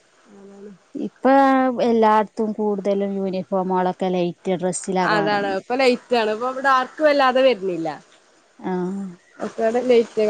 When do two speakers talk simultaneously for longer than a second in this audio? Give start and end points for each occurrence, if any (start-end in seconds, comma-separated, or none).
none